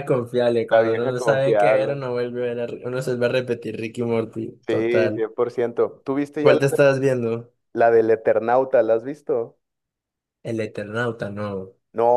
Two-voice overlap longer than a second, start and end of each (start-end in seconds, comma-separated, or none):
0.7-2.0